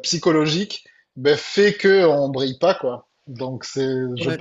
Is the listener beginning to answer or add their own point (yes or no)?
yes